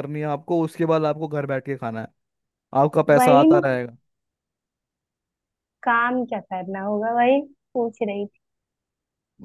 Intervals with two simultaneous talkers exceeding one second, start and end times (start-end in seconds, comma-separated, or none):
none